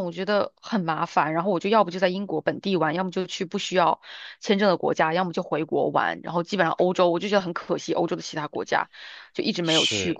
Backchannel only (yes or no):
yes